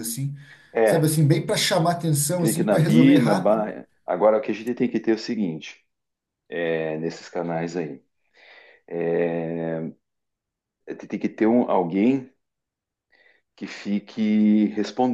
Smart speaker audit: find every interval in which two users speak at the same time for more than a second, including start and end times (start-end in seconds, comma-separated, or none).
2.4-3.7